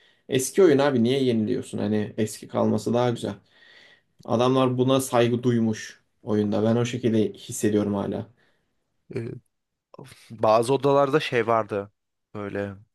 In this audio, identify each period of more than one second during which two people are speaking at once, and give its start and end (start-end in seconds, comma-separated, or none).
none